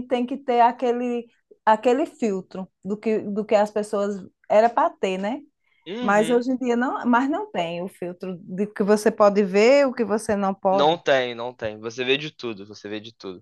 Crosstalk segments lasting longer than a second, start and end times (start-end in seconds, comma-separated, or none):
none